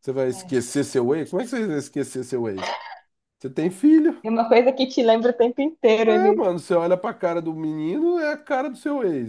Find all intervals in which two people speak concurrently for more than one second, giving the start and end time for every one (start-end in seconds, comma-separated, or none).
none